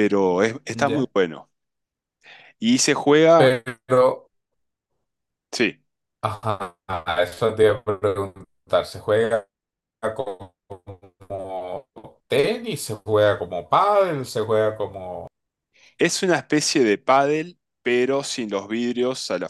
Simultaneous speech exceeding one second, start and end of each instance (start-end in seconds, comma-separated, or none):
none